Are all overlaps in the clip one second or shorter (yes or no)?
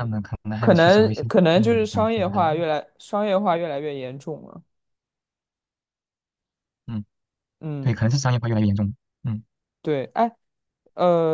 no